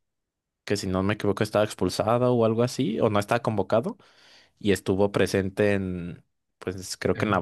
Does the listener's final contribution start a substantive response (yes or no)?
no